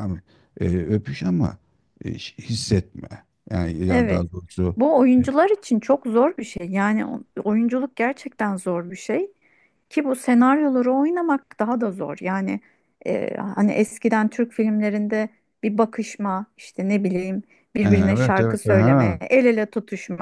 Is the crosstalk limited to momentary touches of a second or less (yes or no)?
no